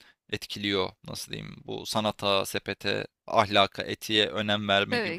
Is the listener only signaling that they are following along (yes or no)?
yes